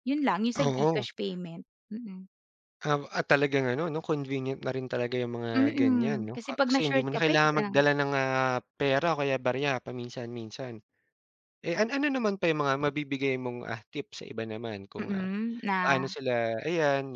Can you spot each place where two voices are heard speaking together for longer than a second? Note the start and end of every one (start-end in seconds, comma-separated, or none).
5.6-7.8